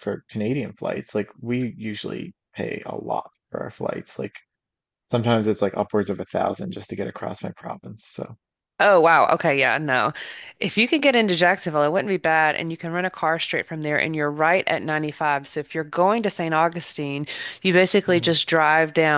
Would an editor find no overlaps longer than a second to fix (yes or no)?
yes